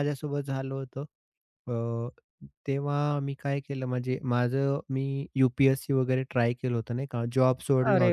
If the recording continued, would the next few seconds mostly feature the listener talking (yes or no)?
no